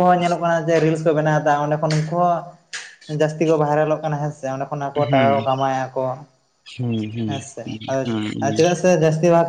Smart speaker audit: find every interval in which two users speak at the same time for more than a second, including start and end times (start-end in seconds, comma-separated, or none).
7.3-8.6